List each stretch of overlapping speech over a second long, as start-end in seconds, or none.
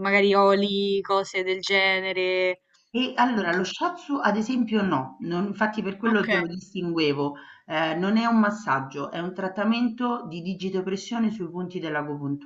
none